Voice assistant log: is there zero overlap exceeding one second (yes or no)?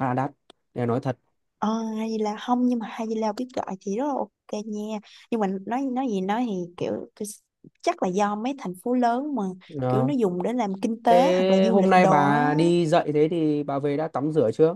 no